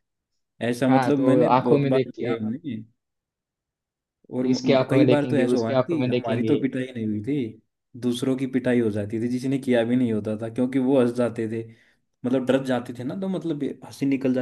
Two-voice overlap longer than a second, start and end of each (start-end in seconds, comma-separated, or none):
0.9-2.4, 4.5-6.6